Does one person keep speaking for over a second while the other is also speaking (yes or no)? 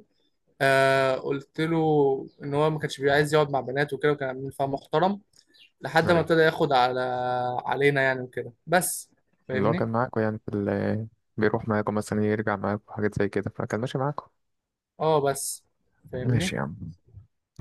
no